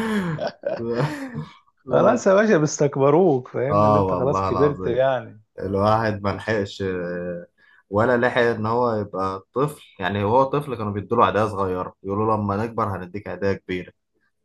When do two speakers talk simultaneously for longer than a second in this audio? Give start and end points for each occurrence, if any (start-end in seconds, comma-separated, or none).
3.7-5.0